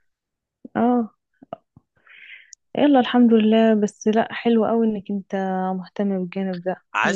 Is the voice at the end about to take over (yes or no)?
yes